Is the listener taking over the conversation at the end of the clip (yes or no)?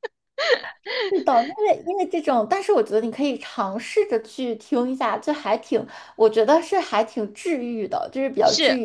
yes